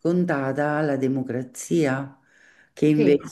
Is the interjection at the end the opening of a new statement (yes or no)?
no